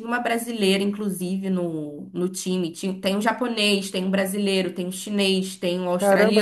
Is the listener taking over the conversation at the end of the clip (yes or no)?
yes